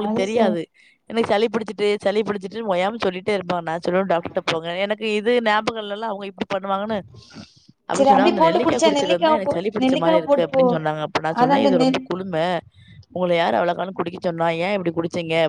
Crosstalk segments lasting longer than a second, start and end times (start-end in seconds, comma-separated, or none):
8.0-10.6